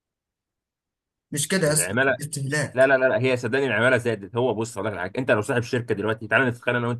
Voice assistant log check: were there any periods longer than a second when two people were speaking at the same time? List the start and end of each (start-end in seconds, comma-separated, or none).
none